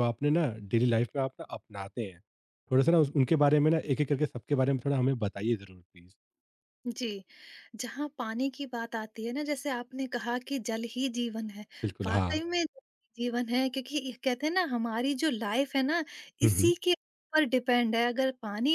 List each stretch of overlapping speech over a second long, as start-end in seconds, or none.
none